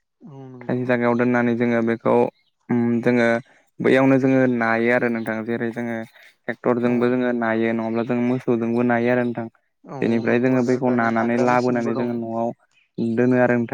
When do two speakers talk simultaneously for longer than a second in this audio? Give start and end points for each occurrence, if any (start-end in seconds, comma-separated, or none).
10.0-12.1